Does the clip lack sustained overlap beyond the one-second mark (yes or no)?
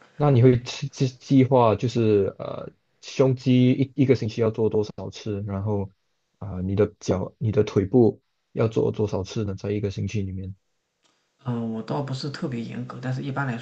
yes